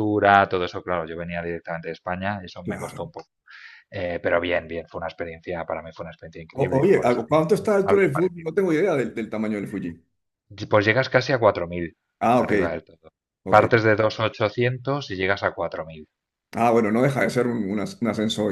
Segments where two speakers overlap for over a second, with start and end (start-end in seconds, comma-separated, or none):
6.5-8.5